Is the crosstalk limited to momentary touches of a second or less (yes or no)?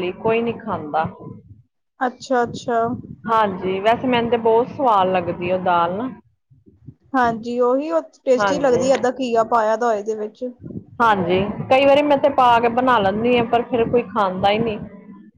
yes